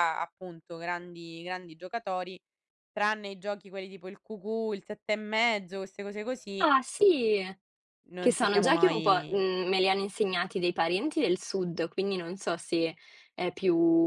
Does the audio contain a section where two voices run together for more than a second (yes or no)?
yes